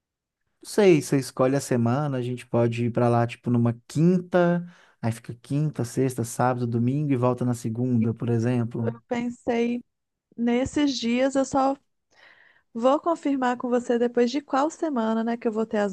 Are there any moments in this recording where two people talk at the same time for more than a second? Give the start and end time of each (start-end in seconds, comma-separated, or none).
none